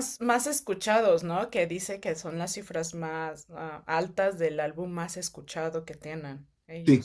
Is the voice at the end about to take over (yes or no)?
yes